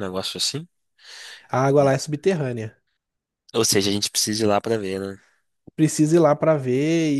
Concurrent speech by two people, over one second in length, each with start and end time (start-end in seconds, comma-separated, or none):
none